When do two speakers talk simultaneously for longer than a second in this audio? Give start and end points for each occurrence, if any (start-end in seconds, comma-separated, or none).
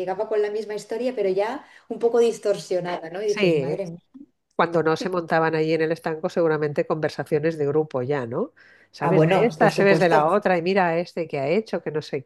9.0-10.3